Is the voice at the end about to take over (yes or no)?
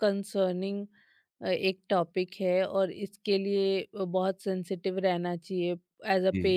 no